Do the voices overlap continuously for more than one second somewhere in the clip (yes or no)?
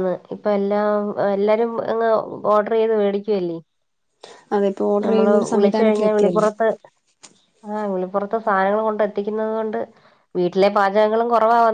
yes